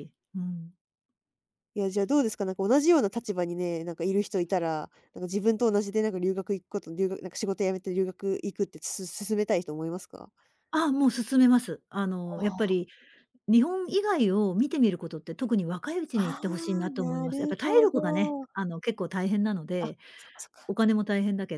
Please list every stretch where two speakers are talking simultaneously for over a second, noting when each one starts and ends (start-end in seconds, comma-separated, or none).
16.1-18.5